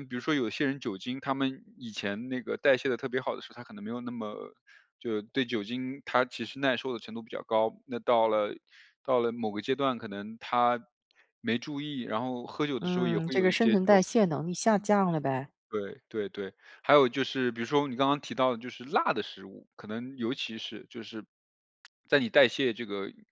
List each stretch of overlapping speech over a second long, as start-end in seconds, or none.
12.8-14.0